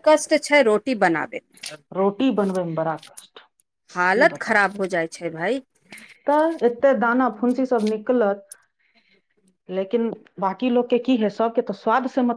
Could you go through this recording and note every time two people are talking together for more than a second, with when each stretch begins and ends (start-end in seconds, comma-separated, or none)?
none